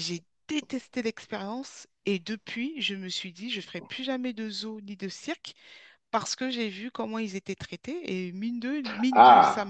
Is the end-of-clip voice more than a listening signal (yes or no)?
no